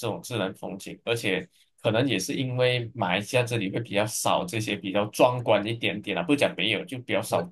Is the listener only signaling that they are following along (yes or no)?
no